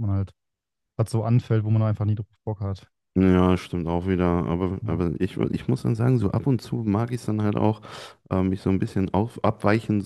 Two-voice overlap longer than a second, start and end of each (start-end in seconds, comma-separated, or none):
none